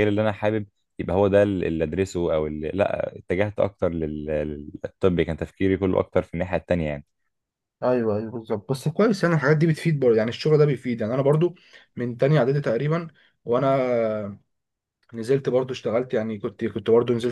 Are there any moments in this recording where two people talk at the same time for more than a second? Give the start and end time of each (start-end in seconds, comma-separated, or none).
none